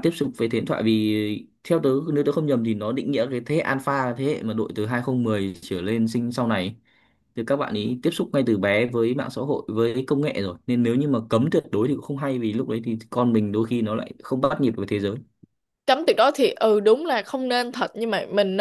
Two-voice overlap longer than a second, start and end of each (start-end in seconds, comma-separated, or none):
none